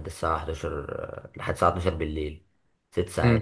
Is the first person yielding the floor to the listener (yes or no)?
yes